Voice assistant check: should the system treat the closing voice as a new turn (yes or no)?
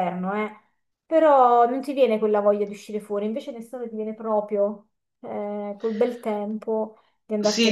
yes